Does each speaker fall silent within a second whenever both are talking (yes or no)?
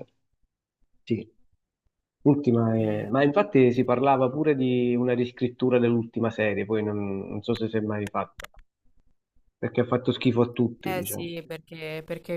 yes